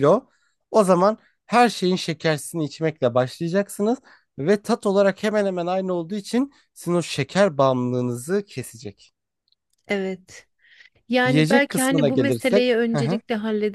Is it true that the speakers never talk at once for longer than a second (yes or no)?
no